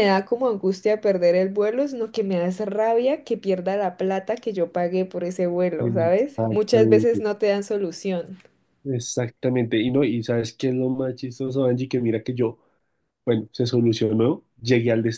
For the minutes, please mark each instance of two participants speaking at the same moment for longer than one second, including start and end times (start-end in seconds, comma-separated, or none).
5.8-7.2